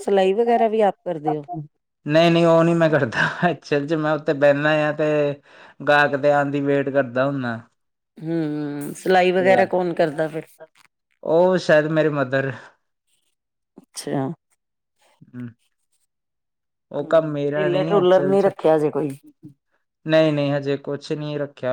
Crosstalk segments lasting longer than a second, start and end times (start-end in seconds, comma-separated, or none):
17.0-18.5